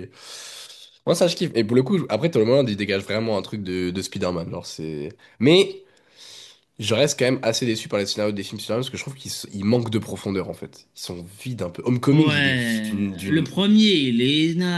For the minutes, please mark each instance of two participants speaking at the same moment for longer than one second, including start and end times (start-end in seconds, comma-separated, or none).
12.1-13.5